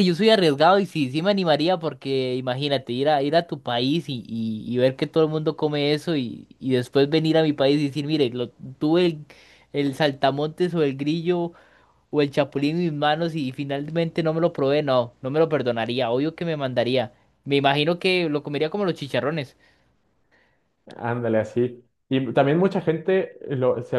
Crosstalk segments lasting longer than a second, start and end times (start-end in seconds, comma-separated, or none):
none